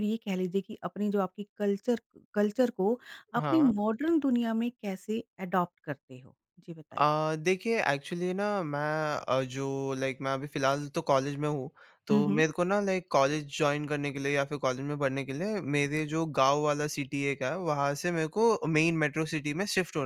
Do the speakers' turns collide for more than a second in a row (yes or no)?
no